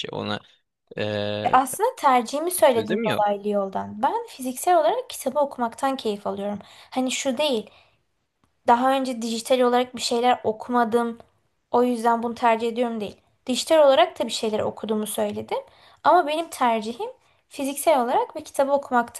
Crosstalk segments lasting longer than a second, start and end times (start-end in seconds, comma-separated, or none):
none